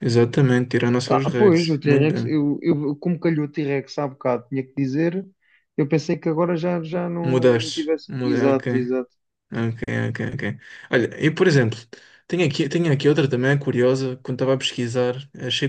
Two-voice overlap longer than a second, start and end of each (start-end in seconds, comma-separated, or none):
1.1-2.4, 7.2-8.6